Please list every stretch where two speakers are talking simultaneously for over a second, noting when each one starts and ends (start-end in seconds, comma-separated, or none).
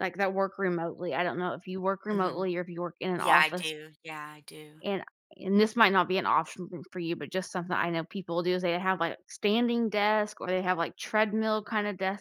none